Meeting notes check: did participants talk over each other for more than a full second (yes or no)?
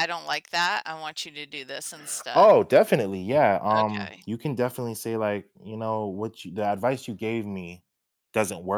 no